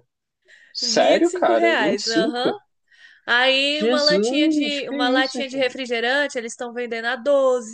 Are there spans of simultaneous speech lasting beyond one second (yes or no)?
yes